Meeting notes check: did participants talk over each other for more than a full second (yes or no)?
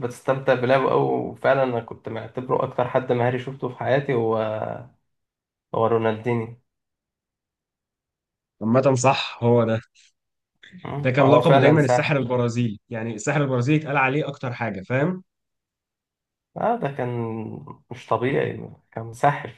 yes